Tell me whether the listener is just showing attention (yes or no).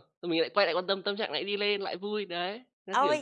no